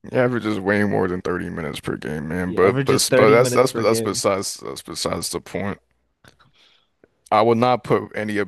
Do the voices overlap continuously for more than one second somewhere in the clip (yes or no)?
yes